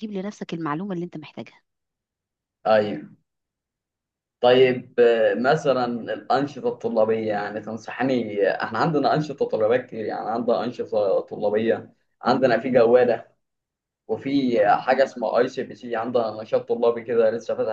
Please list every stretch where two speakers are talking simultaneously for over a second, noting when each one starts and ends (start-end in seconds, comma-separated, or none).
none